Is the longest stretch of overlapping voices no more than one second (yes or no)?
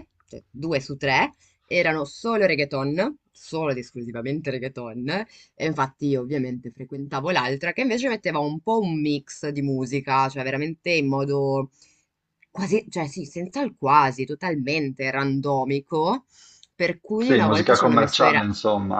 no